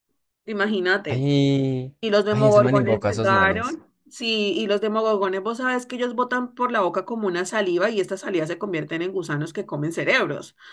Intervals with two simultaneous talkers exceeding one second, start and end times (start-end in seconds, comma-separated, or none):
2.0-3.8